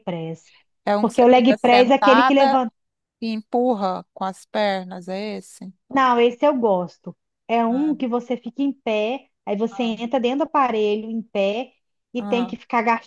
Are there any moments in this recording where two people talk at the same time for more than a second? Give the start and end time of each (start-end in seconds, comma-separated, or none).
1.0-2.6